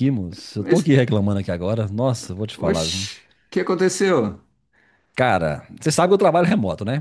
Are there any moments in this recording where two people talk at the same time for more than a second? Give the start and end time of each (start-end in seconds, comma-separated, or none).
none